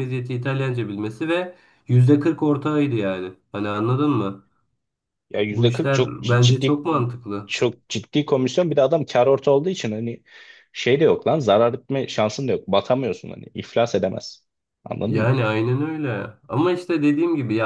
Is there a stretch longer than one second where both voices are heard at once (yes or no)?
yes